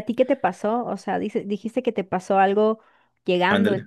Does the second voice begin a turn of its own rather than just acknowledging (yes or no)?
no